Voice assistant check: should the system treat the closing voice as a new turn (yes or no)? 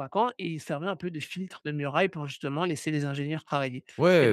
yes